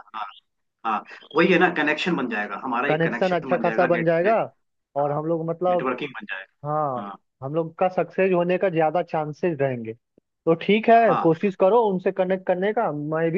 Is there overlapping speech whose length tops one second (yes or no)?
yes